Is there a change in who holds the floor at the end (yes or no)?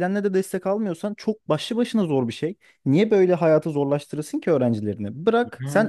no